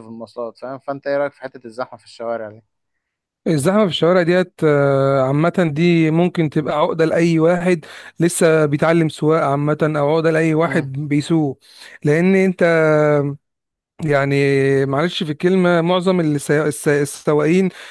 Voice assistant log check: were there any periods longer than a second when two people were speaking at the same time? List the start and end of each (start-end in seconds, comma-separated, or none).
none